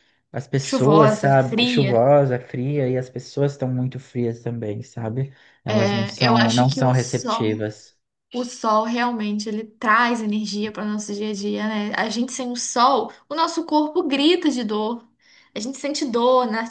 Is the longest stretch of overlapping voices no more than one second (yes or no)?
no